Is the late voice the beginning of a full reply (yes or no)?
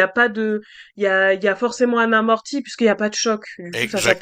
yes